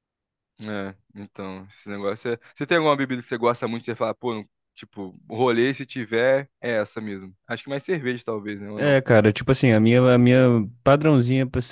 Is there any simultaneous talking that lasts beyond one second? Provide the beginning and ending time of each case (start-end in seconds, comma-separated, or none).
none